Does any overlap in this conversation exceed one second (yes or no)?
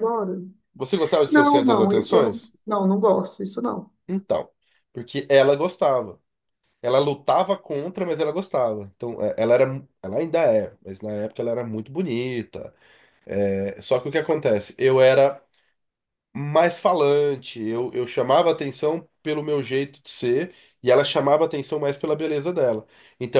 yes